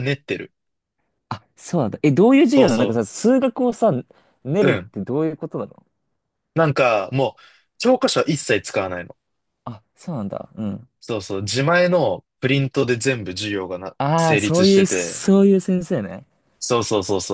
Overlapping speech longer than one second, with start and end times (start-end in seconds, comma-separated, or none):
14.0-15.2